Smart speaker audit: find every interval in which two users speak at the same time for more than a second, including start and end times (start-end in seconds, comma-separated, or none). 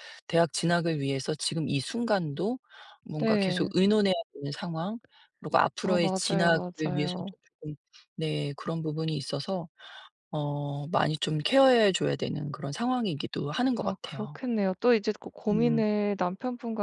5.8-7.2